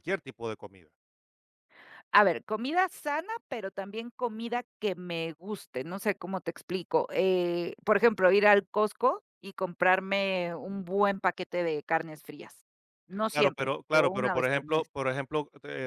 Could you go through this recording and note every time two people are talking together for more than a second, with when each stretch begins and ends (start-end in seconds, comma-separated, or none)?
13.3-14.9